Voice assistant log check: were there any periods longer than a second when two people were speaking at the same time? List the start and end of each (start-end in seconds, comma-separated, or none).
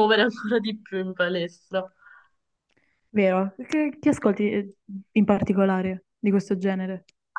none